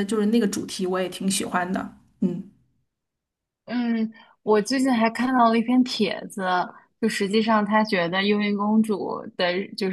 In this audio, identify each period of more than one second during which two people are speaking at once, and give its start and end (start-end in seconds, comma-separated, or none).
none